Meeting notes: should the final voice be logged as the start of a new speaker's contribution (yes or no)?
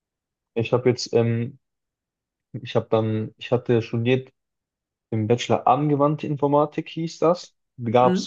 no